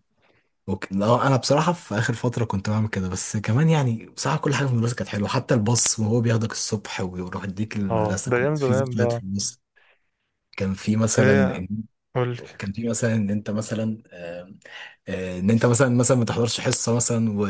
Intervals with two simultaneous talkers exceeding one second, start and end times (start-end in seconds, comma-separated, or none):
7.9-9.2